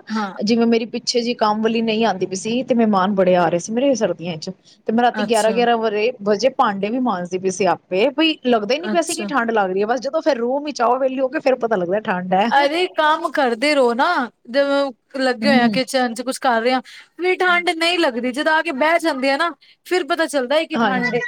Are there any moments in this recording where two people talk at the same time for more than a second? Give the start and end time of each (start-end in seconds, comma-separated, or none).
none